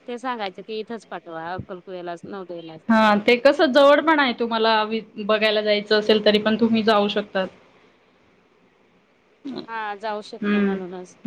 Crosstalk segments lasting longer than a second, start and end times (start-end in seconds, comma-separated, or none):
none